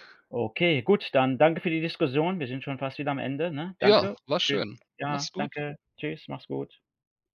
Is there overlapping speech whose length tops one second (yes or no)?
yes